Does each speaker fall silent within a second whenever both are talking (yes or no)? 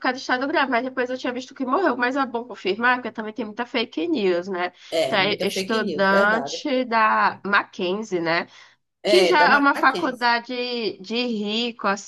no